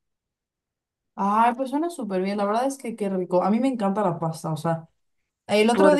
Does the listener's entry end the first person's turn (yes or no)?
no